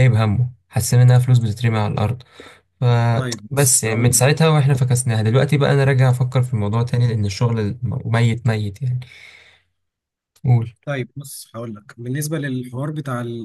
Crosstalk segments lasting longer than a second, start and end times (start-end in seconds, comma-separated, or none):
3.1-4.4